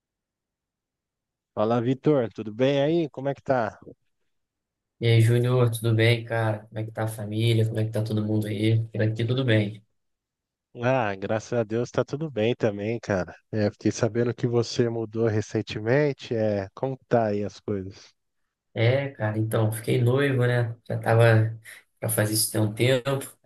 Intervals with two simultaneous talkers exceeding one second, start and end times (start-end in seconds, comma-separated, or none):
none